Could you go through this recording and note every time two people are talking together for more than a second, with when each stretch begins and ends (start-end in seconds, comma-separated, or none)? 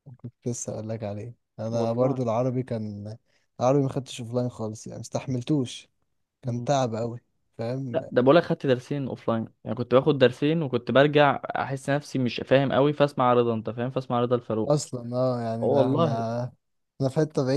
none